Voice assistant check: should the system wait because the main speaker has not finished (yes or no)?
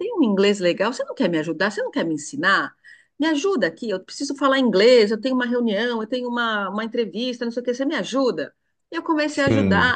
yes